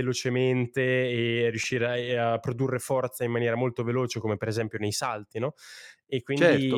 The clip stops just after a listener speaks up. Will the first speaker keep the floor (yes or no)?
no